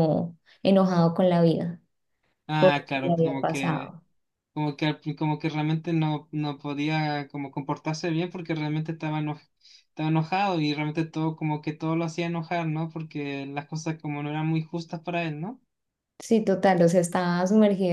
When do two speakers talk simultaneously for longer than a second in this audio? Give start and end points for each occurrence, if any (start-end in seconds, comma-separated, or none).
2.6-3.9